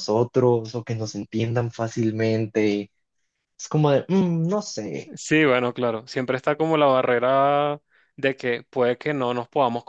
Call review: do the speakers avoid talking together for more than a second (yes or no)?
yes